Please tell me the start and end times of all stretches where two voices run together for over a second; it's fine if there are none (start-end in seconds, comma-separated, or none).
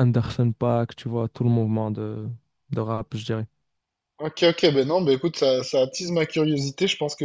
none